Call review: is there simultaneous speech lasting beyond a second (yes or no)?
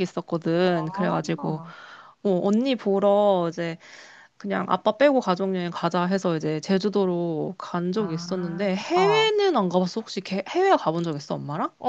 yes